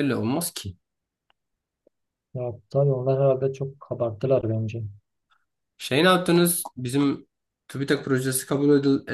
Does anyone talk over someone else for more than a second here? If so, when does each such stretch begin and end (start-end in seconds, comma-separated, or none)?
none